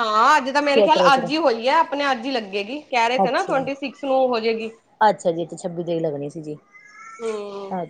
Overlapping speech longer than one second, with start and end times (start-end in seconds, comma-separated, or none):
none